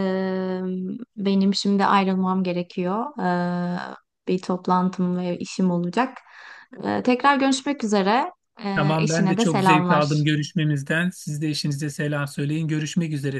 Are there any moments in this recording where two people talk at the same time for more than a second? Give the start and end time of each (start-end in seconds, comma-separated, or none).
8.8-10.2